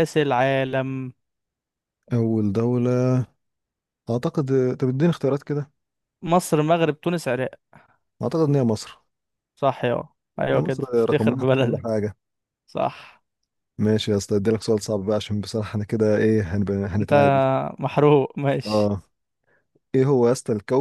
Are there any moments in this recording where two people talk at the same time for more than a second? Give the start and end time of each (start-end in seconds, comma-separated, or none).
10.5-11.8